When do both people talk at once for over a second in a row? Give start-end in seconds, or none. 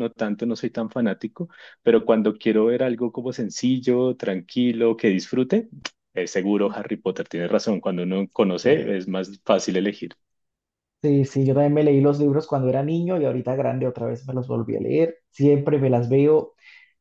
none